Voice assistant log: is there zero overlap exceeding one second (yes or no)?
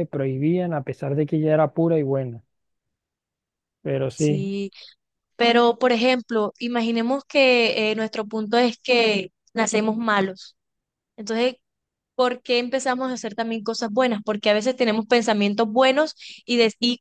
yes